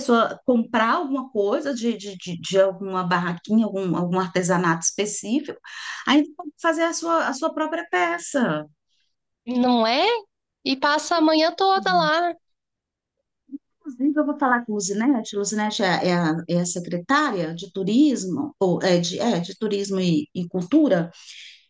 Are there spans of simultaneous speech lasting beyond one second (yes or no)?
no